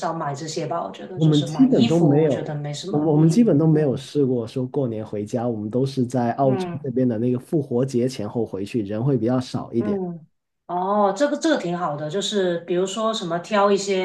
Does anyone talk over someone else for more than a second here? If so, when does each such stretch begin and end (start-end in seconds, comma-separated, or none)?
1.1-4.1